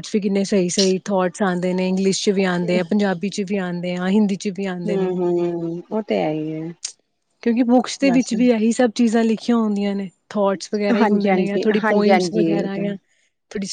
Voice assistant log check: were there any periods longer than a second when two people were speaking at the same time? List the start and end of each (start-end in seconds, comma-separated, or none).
11.0-12.8